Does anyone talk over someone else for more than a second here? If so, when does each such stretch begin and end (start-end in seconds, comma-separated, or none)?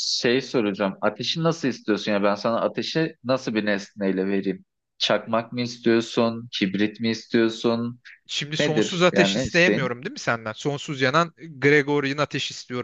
8.6-9.9